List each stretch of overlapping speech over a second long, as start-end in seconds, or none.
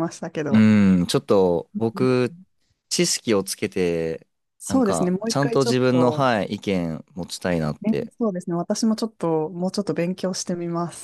4.7-6.2